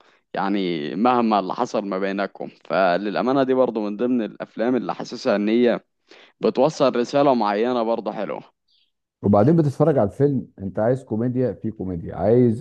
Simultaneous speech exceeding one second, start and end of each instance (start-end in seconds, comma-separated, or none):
none